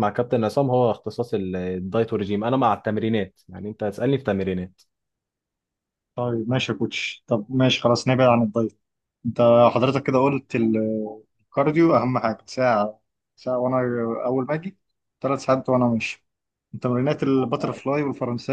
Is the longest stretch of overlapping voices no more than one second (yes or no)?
yes